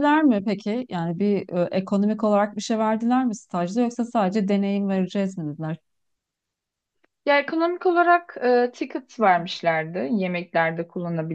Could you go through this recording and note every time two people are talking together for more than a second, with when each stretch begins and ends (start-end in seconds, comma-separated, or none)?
none